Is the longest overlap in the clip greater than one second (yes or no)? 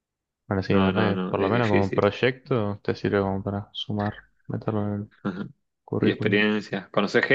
yes